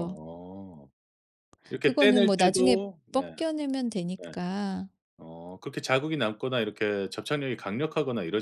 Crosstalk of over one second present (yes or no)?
yes